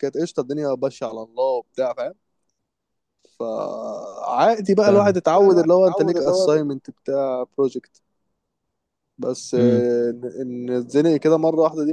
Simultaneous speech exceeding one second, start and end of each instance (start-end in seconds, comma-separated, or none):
4.9-6.5